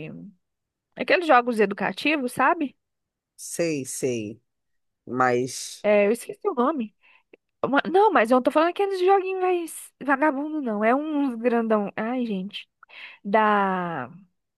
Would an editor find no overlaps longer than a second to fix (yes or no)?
yes